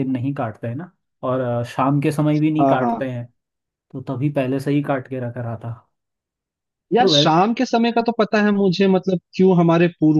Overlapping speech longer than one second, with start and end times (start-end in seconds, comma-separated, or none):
none